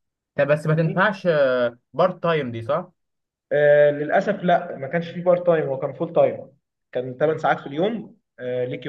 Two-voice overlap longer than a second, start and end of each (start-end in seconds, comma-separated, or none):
none